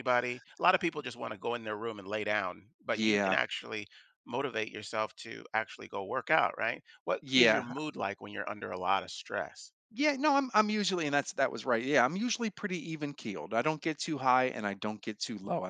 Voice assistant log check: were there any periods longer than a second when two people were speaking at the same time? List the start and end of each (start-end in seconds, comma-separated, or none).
none